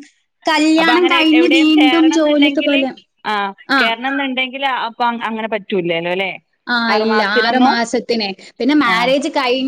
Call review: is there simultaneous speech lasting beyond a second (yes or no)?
yes